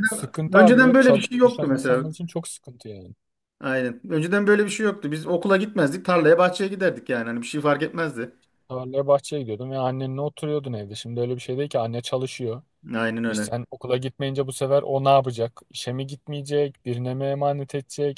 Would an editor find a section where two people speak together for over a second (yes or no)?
yes